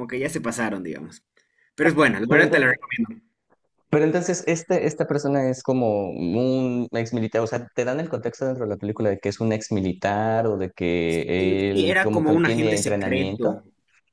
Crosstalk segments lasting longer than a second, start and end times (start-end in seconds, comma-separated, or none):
11.7-13.6